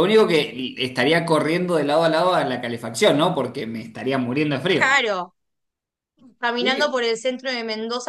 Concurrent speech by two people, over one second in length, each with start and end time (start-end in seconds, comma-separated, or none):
none